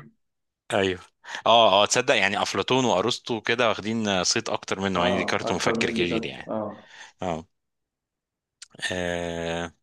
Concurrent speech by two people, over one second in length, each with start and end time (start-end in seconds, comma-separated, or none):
5.0-6.5